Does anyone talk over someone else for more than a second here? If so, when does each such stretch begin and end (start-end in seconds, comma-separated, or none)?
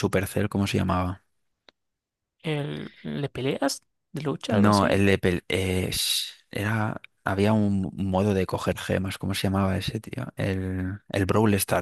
none